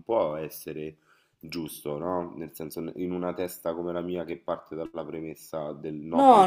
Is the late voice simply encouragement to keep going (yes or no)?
no